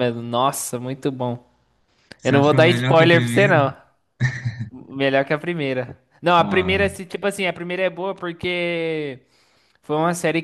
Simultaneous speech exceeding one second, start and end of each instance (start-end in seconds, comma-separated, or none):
2.2-3.6